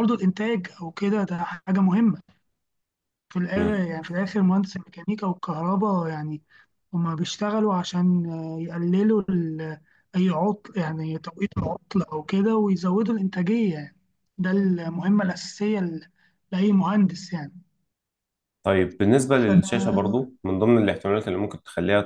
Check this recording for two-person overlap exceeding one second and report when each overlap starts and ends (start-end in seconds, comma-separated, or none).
none